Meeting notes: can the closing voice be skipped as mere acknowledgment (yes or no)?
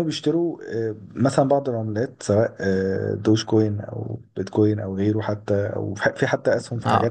no